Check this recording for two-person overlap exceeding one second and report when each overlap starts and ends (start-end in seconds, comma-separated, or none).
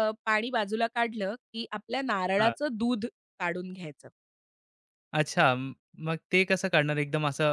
none